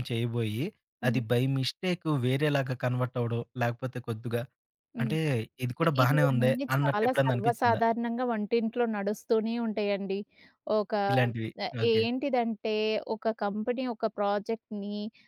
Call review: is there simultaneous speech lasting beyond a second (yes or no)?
yes